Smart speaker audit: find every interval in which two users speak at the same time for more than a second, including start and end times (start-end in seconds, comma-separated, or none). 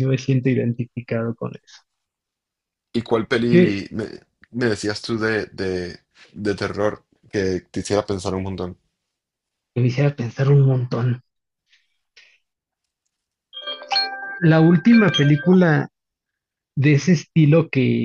none